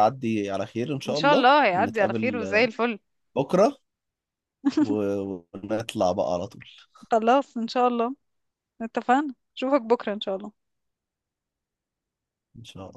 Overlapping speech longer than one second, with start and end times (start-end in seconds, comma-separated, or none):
1.1-2.7